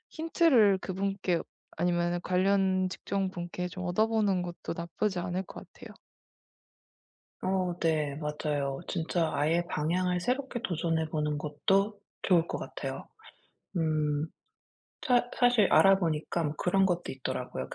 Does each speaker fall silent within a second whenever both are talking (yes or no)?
yes